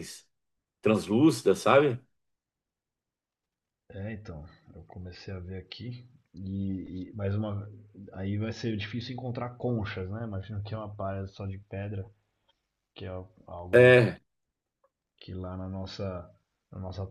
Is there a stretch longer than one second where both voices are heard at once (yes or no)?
no